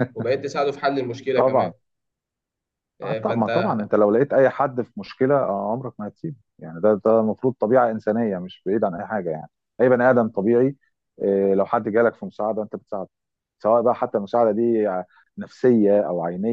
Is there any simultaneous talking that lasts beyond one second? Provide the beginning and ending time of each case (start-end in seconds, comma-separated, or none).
none